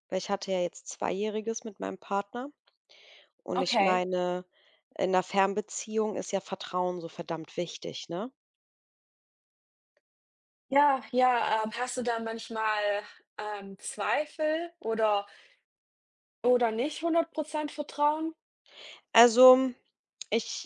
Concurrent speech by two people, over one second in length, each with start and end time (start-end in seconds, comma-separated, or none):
none